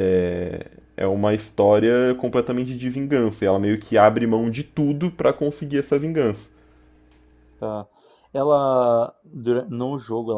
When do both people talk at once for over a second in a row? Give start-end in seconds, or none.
none